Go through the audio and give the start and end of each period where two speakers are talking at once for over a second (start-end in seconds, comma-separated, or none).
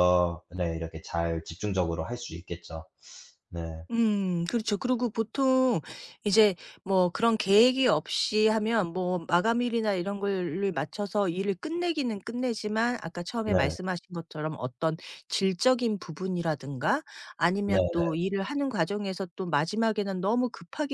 none